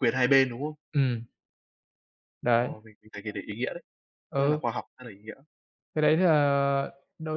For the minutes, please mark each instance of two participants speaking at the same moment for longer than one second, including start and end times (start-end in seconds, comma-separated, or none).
none